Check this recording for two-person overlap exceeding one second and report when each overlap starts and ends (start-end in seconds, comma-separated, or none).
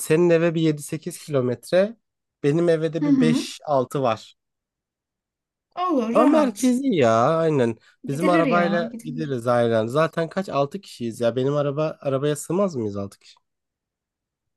8.1-9.4